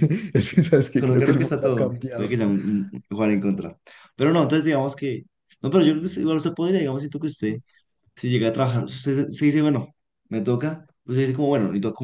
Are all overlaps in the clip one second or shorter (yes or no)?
no